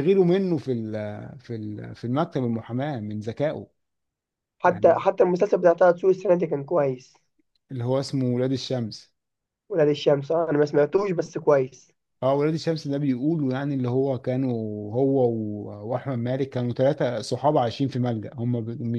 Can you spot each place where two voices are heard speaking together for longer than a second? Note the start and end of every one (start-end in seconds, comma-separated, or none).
none